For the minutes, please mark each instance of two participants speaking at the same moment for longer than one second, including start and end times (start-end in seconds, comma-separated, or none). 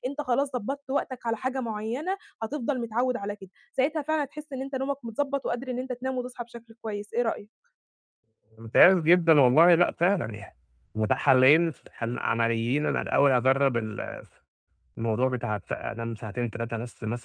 none